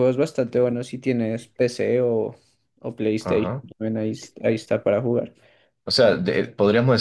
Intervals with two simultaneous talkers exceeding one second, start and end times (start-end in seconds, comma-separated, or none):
none